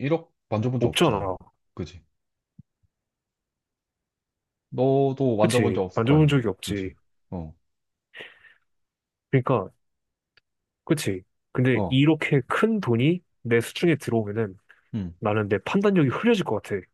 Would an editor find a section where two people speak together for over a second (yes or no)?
yes